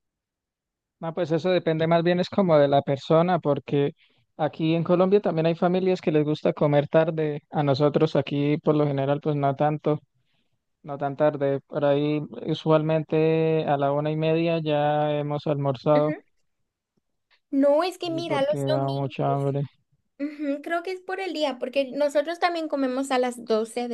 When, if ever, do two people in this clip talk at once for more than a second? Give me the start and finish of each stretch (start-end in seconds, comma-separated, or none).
18.1-19.5